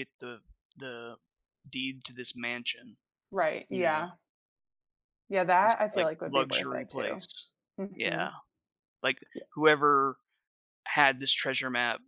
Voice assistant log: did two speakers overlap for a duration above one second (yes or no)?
yes